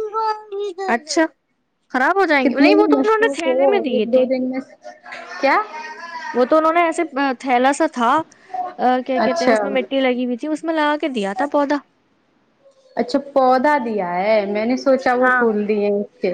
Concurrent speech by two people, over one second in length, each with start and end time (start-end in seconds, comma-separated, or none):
2.4-4.2